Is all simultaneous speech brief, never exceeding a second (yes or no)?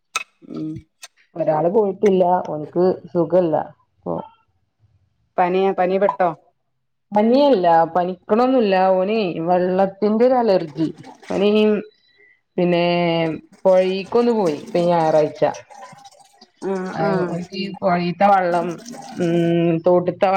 yes